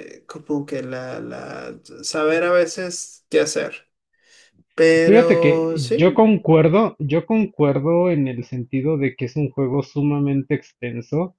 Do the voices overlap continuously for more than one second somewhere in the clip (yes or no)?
yes